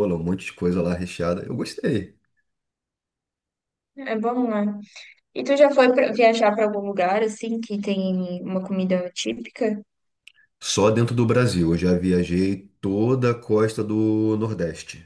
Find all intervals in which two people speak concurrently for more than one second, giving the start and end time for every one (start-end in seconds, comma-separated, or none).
none